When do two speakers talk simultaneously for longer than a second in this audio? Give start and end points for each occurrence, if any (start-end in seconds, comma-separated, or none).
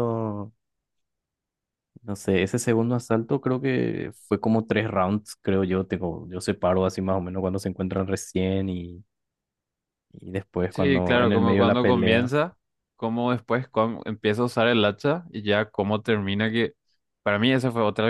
10.7-12.3